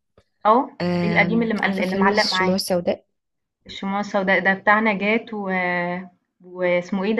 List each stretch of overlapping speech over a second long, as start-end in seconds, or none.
0.8-2.6